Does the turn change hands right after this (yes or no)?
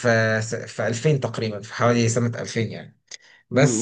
yes